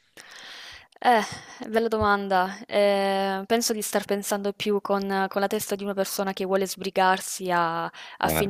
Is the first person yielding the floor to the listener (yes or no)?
no